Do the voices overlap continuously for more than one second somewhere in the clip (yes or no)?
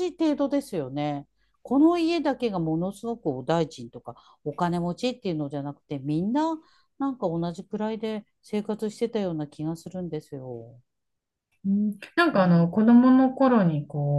no